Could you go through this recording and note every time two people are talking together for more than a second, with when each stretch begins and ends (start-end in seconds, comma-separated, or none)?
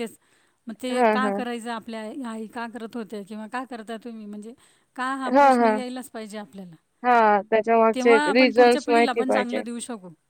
7.9-9.6